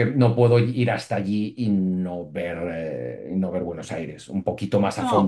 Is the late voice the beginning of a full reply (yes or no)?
yes